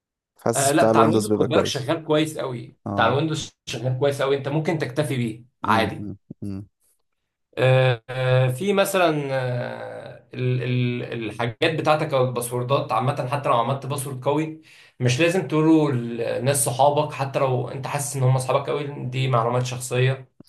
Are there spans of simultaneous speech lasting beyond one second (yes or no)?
yes